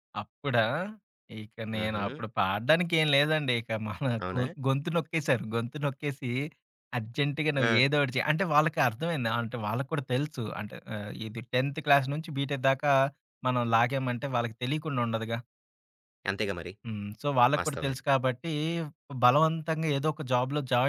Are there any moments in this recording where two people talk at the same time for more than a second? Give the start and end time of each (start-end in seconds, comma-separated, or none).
none